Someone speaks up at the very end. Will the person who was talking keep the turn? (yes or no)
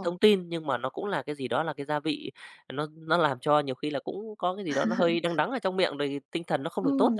no